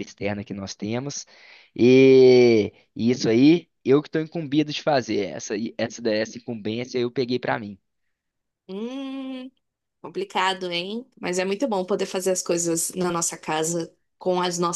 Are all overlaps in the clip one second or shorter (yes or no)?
yes